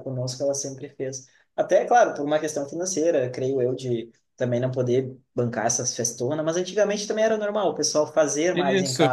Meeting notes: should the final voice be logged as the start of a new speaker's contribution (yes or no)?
yes